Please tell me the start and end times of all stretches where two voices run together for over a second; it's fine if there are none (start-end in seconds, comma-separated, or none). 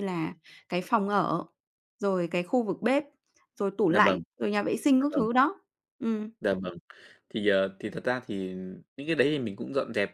none